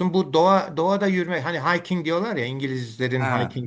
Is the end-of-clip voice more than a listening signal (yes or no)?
no